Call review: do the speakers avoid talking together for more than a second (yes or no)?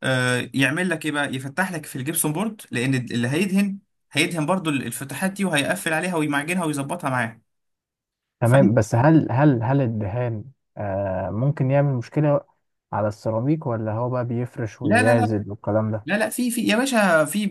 yes